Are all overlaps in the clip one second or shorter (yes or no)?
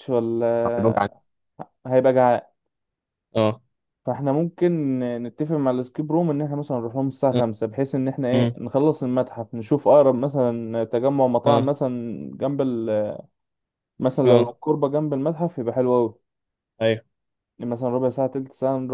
yes